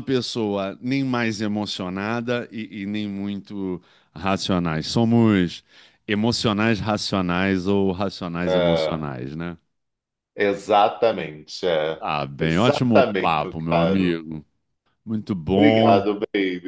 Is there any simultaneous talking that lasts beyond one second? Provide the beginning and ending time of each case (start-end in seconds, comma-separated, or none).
12.0-14.2